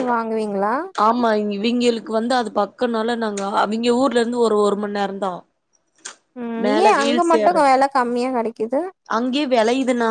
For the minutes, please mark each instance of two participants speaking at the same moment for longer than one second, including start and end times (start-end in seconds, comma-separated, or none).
none